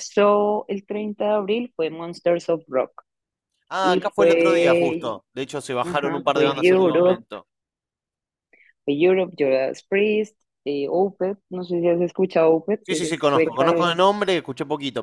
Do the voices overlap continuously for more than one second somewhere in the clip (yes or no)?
yes